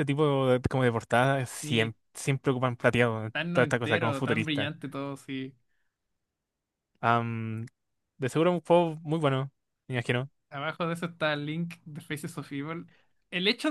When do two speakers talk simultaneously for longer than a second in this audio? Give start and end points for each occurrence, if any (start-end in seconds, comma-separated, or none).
3.3-4.7